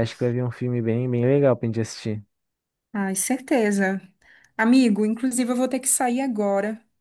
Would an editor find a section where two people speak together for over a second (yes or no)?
no